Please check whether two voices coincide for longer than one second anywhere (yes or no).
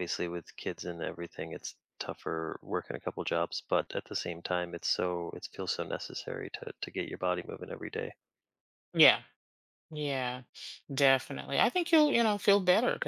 no